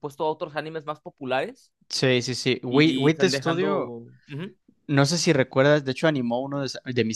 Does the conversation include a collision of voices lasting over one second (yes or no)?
yes